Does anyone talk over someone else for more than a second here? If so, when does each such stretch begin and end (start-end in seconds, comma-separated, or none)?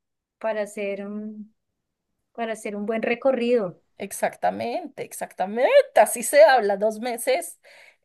none